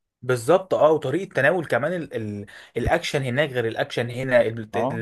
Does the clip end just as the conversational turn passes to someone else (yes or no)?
no